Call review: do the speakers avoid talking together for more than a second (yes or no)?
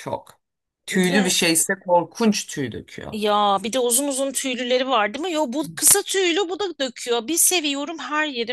yes